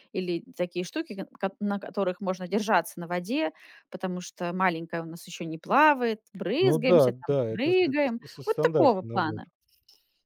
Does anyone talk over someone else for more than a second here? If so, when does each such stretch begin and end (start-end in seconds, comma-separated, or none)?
6.6-9.4